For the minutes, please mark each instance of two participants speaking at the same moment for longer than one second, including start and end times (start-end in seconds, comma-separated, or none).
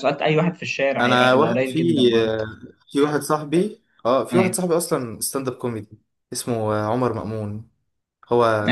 1.0-2.4